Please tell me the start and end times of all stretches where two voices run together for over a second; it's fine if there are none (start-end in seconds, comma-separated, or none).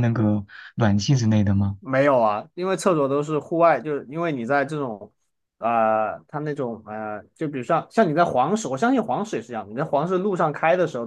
none